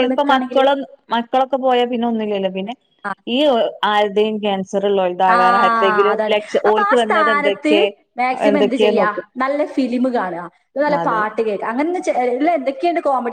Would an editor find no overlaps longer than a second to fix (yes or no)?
no